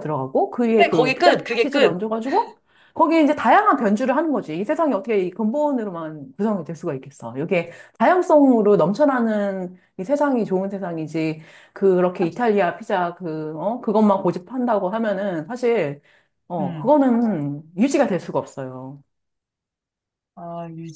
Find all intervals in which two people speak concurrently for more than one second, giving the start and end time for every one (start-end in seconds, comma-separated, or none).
0.8-2.0